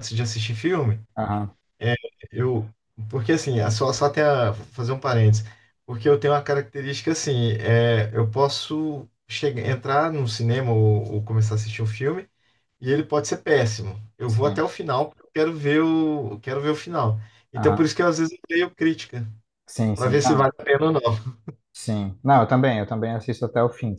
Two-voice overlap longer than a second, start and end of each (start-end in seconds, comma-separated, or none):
none